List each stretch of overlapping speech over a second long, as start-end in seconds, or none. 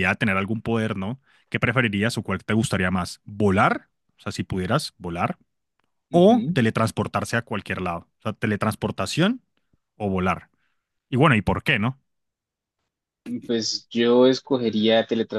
none